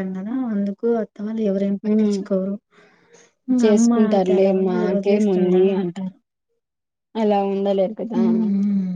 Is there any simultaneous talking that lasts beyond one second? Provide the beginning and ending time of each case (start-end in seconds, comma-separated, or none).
3.6-5.6